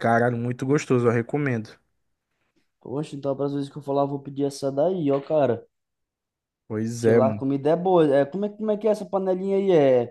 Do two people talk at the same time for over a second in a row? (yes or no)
no